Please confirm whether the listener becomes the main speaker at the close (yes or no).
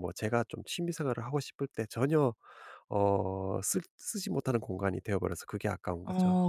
yes